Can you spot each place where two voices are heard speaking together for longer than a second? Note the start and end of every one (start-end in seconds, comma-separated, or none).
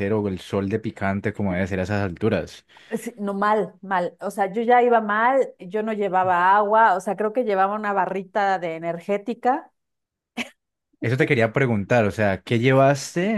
none